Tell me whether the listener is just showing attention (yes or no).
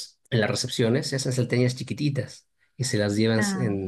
yes